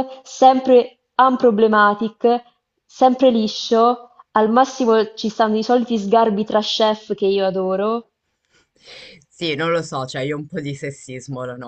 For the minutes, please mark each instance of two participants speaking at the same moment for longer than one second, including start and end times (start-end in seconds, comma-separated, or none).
none